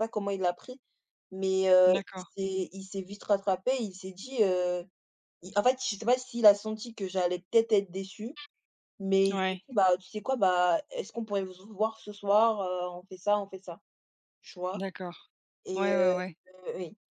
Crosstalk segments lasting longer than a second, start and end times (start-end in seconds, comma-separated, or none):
none